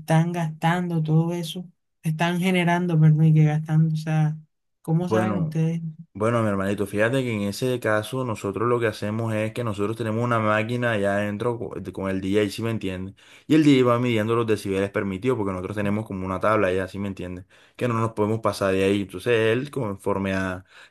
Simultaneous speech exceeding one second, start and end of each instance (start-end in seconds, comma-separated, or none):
none